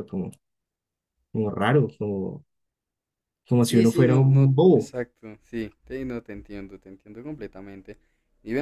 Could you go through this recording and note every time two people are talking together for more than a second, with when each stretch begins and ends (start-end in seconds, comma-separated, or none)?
3.6-4.9